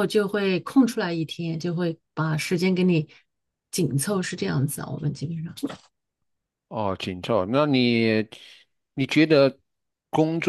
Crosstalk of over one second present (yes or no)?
no